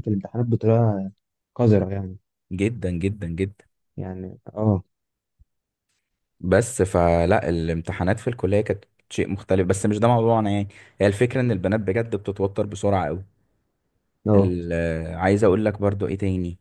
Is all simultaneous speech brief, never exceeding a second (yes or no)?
yes